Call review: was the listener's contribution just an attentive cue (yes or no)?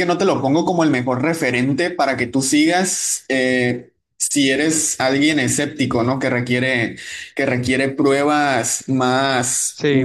no